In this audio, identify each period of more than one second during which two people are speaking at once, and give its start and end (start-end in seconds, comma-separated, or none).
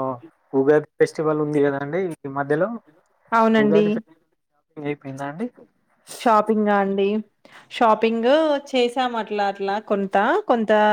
none